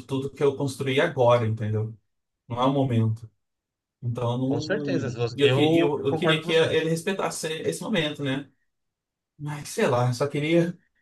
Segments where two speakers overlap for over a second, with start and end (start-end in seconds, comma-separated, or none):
4.5-6.7